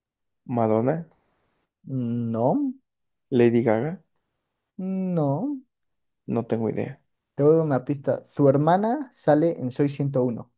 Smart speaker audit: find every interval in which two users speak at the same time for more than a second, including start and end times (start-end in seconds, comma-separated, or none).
none